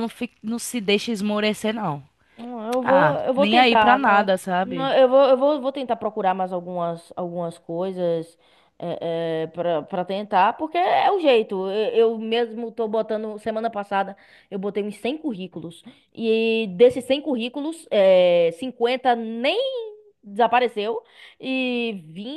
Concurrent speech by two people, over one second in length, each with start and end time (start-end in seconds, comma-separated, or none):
2.8-4.9